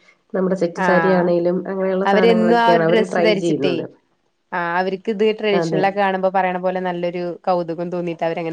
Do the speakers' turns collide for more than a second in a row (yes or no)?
yes